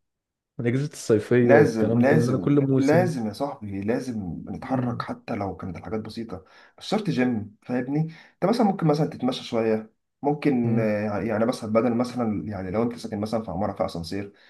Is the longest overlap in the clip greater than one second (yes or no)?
yes